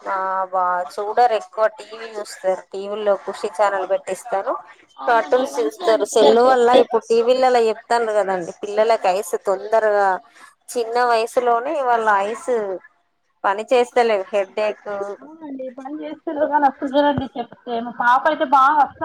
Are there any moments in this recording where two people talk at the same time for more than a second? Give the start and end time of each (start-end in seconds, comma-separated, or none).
5.1-6.8